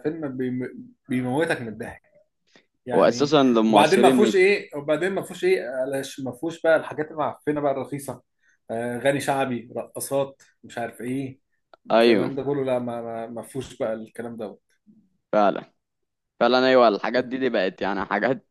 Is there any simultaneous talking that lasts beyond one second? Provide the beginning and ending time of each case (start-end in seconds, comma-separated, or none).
3.0-4.3